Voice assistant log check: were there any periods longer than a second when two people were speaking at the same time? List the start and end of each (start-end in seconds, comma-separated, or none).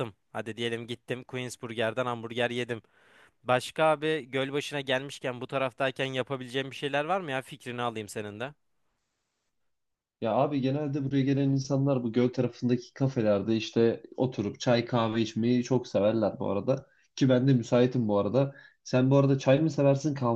none